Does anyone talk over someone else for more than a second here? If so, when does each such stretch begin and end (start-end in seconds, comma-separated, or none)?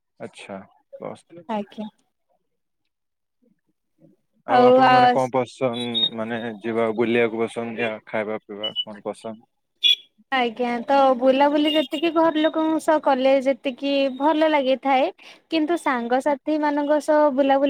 none